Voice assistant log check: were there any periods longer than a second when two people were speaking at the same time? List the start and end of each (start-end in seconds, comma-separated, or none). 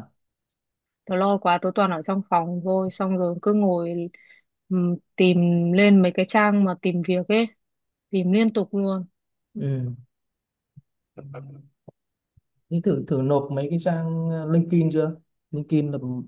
none